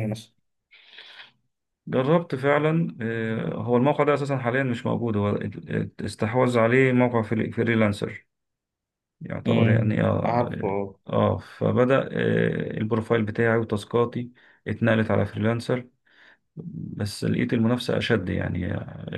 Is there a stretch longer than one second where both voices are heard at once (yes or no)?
yes